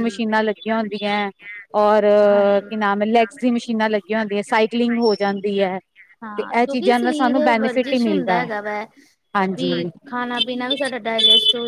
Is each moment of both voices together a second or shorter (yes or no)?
yes